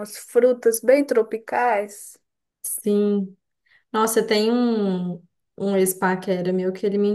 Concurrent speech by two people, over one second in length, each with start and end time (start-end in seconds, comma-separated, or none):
none